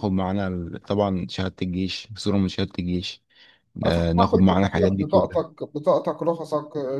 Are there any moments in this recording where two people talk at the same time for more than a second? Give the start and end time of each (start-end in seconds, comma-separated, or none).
3.9-5.4